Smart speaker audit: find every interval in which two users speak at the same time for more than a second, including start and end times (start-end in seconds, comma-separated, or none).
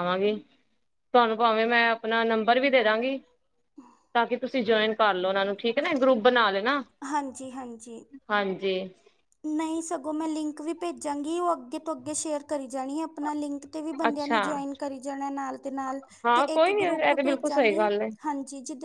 16.2-17.9